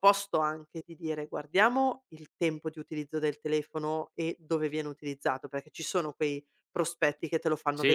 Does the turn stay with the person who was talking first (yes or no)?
no